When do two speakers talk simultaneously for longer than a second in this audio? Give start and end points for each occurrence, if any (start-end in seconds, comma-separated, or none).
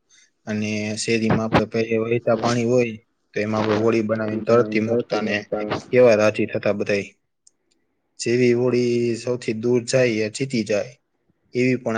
4.1-5.3